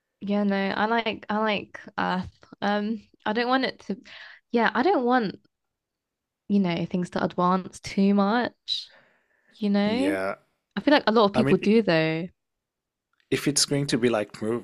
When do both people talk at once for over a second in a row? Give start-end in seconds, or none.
none